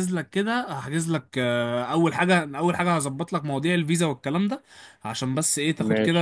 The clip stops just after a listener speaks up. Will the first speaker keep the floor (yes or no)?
yes